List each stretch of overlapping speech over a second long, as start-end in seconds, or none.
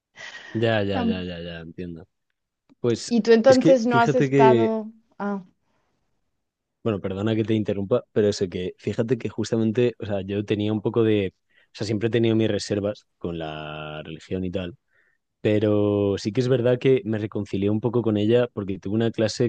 3.1-4.7